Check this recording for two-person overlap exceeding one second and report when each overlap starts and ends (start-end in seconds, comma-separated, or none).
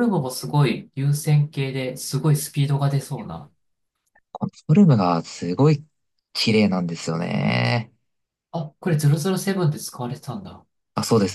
none